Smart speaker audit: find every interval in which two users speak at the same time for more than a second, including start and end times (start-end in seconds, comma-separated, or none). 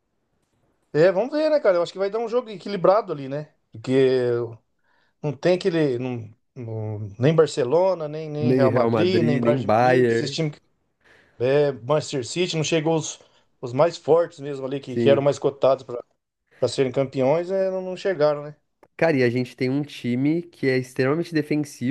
8.4-10.4